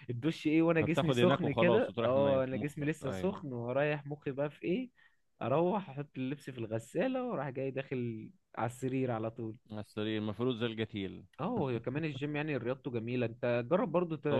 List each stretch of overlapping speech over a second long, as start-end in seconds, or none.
0.8-3.4